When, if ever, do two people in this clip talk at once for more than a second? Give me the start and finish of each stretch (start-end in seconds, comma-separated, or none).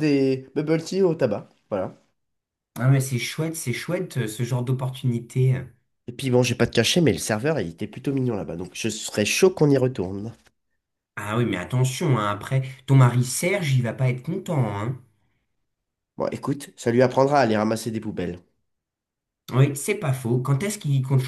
none